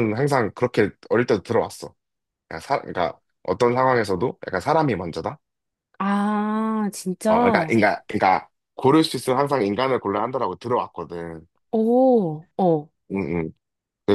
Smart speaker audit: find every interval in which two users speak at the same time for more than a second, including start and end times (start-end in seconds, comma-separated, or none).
none